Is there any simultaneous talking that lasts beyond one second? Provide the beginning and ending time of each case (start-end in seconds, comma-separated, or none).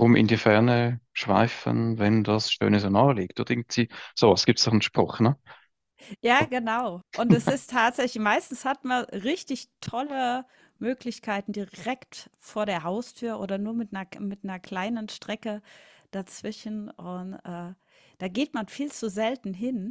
none